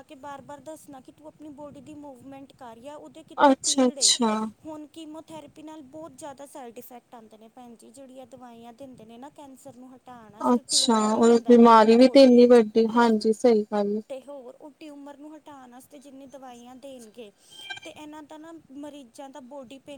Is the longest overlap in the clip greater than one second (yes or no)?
yes